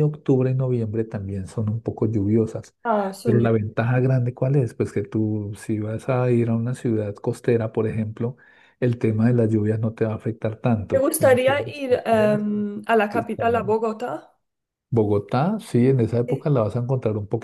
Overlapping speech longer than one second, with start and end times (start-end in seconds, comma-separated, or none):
10.9-12.5